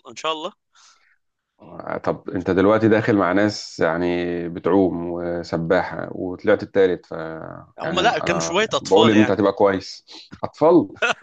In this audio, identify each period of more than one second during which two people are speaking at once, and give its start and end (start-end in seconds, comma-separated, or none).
7.8-9.4